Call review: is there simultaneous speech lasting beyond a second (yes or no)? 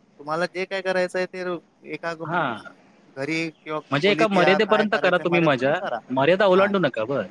yes